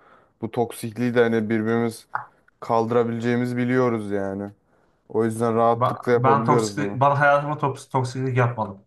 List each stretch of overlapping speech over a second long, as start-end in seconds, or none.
5.8-7.0